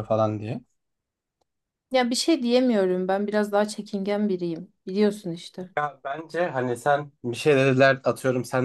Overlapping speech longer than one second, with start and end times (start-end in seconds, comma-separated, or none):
none